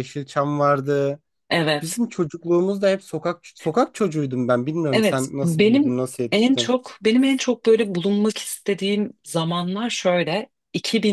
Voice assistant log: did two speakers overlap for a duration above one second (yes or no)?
yes